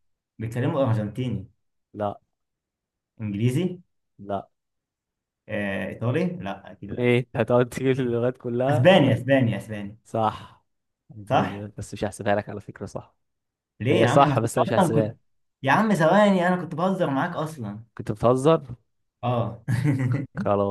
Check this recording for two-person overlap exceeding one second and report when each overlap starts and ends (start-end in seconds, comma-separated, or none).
13.9-15.2